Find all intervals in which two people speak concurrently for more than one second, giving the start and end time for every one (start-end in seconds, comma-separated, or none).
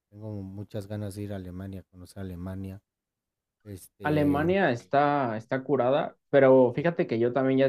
none